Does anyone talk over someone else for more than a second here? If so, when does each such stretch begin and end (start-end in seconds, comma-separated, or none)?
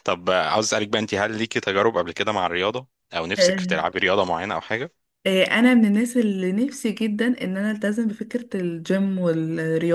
none